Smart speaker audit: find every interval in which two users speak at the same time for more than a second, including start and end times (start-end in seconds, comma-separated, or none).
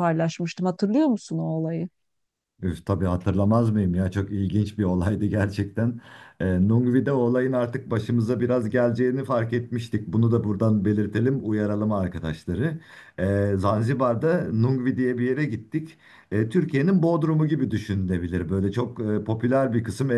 none